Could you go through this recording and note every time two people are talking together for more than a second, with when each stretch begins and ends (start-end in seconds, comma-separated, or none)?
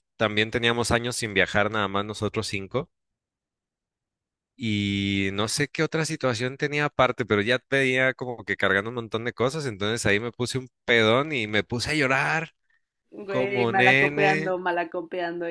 13.3-14.6